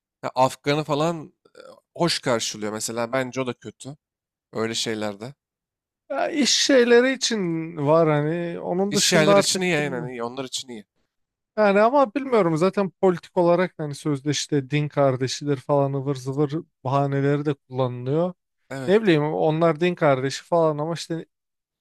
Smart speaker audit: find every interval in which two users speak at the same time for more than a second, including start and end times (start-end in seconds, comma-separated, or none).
8.9-10.1